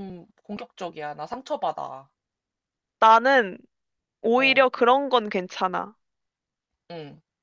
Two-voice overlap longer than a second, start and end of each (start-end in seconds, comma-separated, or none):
none